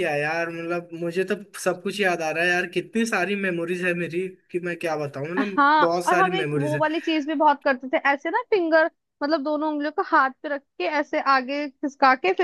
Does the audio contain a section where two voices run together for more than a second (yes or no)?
yes